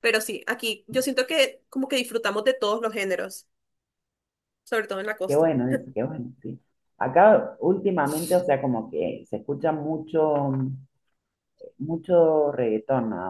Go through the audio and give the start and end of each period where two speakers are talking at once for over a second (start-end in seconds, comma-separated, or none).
none